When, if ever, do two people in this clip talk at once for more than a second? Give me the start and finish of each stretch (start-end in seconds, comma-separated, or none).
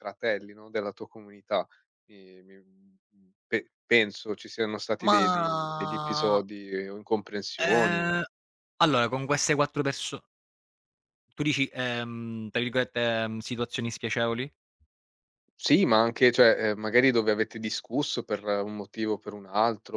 5.1-6.4